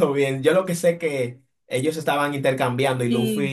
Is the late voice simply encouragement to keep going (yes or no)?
yes